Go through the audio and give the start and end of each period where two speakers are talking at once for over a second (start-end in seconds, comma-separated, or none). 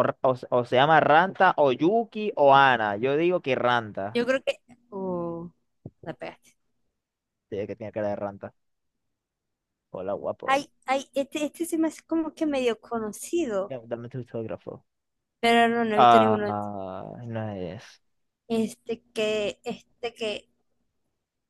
none